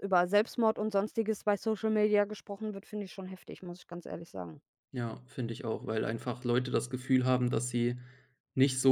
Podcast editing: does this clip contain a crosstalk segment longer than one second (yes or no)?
no